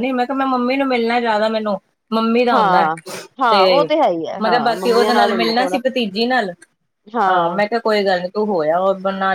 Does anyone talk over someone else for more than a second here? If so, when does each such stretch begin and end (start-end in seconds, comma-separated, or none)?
4.4-5.8